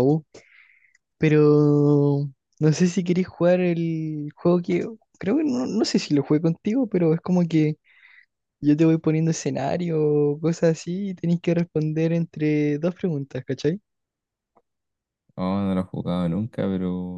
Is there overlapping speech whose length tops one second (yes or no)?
no